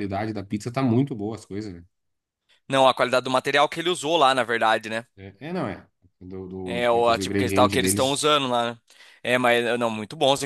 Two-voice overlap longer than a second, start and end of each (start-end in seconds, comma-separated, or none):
6.6-8.2